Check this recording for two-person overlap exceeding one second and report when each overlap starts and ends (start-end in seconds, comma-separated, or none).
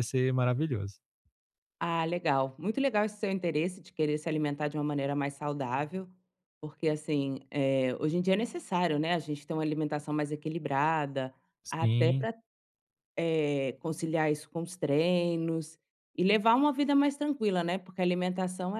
none